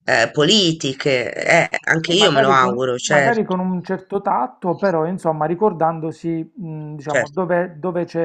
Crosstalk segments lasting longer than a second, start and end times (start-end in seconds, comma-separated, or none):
2.0-3.4